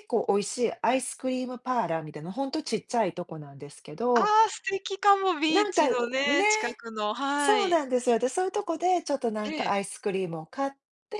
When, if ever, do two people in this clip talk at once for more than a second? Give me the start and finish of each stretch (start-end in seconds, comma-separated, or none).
none